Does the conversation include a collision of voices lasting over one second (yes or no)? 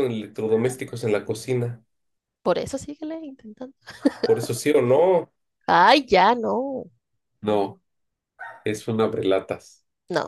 no